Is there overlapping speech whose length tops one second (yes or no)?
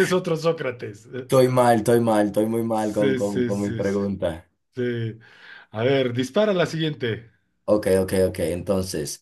yes